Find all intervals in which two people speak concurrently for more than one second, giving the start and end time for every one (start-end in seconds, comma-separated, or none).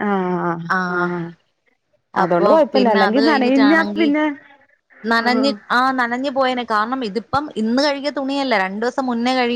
2.2-4.1